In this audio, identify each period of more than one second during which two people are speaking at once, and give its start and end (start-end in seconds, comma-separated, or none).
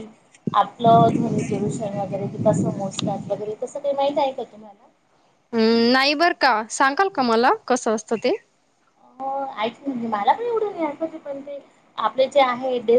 none